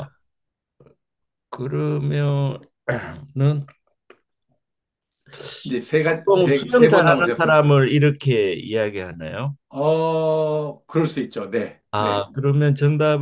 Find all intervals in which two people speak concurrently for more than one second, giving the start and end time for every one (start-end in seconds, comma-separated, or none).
6.0-7.6